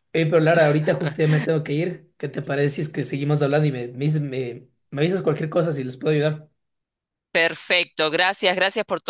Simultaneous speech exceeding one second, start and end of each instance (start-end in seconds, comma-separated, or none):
none